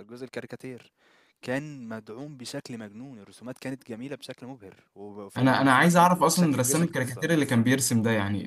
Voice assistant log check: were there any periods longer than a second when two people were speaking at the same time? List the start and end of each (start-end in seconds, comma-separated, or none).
5.4-7.3